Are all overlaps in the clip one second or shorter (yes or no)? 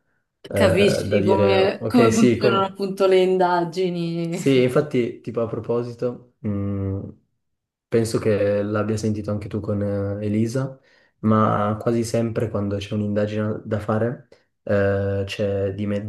no